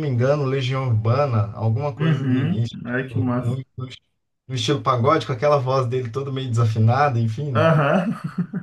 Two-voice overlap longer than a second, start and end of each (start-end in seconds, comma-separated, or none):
2.0-3.6